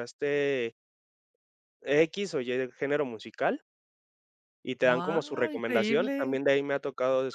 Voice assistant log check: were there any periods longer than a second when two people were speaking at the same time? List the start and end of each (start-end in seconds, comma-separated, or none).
4.9-6.4